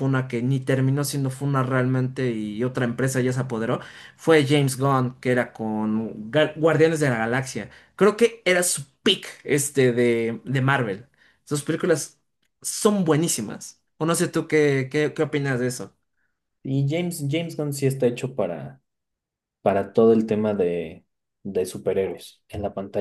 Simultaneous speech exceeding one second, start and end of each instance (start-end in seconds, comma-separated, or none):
none